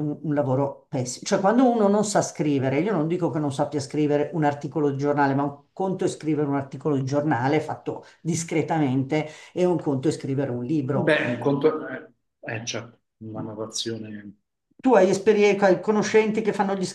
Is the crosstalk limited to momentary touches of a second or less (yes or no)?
yes